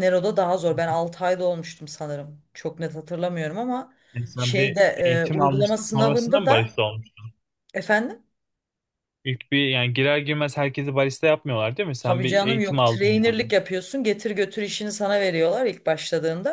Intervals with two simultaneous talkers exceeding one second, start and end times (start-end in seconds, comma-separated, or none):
4.4-6.7, 12.0-13.4